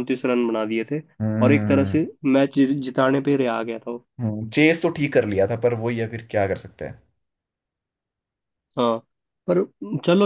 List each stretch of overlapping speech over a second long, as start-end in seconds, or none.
none